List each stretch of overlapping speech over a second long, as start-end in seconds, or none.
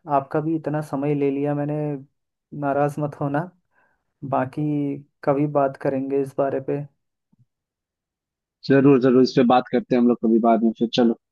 none